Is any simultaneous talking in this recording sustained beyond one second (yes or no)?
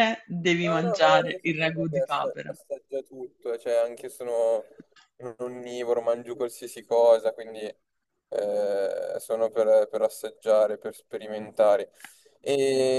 yes